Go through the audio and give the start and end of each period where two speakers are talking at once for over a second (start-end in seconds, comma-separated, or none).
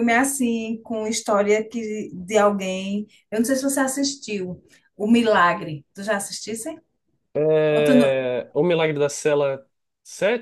none